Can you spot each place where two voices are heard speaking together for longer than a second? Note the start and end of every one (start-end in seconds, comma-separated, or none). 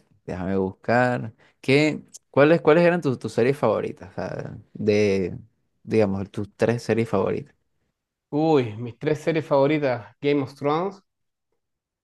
none